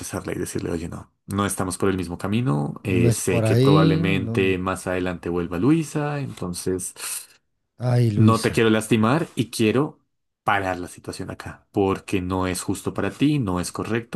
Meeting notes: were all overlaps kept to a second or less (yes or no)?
no